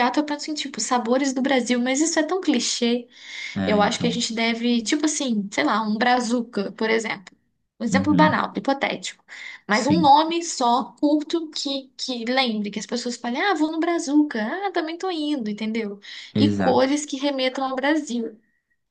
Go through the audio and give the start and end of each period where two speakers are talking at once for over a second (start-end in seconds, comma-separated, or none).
none